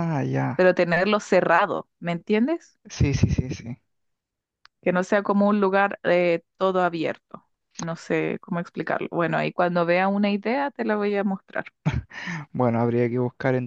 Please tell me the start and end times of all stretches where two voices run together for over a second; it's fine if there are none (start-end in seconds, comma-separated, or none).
none